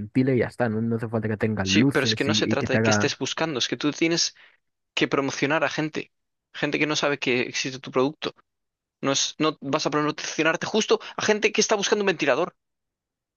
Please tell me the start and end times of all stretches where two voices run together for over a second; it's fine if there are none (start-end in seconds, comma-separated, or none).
1.6-3.1